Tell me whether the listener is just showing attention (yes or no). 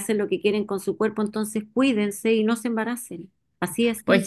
no